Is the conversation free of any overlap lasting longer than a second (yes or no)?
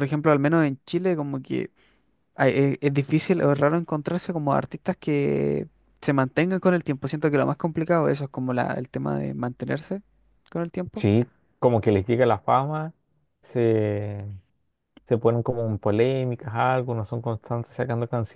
yes